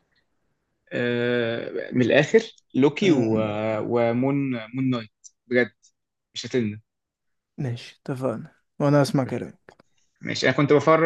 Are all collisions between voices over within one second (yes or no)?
yes